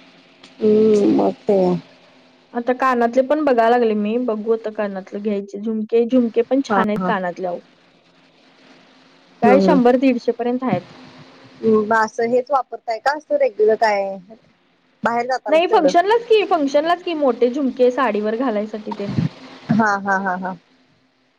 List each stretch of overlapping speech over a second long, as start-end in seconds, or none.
none